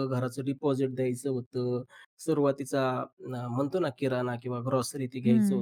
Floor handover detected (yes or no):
no